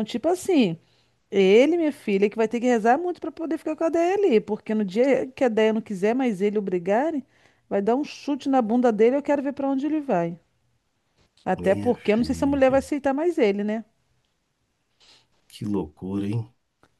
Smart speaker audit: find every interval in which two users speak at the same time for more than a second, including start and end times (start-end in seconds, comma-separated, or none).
11.6-12.8